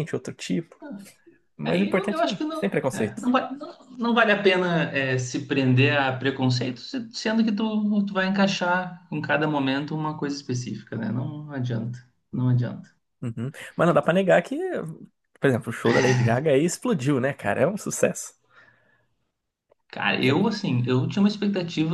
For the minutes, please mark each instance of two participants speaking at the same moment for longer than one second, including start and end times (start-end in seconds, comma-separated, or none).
1.6-3.2